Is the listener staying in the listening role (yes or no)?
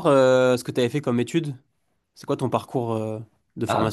no